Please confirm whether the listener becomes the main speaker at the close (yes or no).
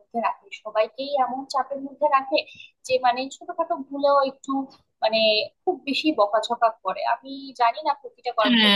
yes